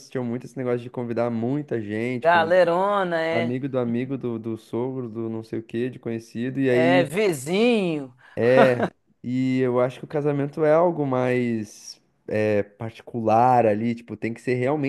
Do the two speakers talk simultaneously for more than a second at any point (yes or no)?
no